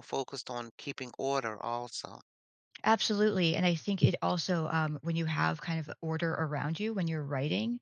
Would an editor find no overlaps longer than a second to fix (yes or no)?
yes